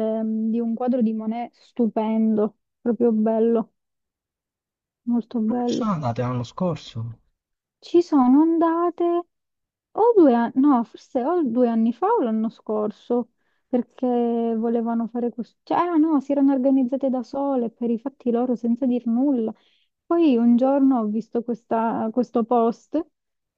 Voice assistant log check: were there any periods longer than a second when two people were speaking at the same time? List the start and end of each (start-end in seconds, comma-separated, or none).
none